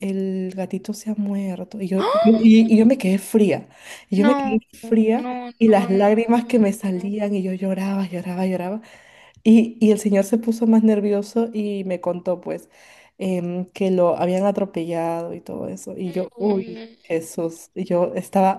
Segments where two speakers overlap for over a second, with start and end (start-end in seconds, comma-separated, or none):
4.2-7.2